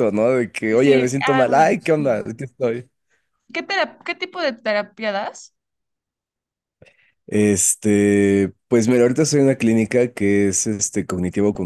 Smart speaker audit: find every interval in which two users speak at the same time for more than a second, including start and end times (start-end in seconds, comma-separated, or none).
0.7-2.2